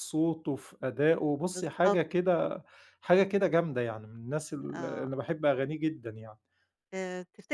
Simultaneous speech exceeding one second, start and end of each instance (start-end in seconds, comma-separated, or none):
none